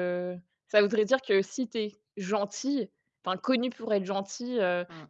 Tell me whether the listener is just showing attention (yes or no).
yes